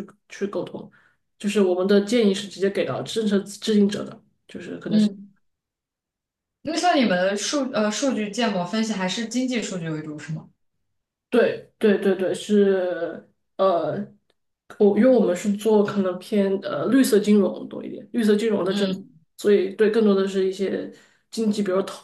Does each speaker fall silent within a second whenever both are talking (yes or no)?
yes